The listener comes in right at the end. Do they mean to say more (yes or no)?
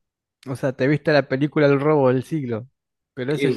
yes